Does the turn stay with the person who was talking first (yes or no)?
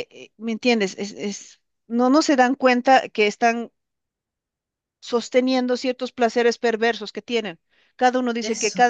yes